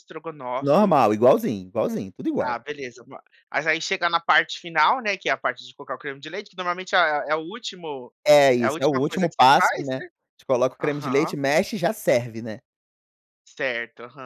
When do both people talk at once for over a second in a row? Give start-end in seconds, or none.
8.6-10.1